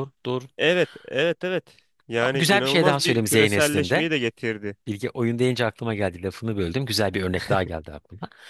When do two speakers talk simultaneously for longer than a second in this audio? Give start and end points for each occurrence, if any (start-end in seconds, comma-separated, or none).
2.2-4.1